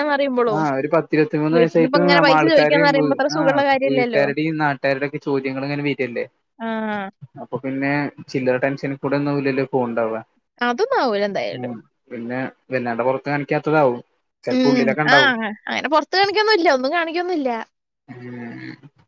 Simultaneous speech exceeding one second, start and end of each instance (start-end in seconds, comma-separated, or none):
1.5-4.2